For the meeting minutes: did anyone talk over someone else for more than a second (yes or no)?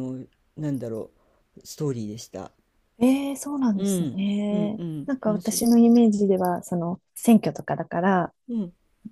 yes